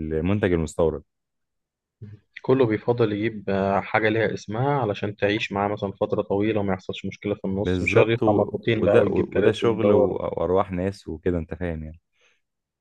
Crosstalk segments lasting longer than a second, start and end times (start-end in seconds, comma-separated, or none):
7.6-10.2